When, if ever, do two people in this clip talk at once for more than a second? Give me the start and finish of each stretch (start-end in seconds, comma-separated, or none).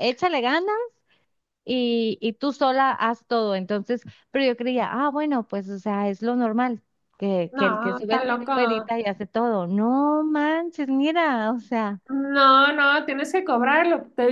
7.5-8.9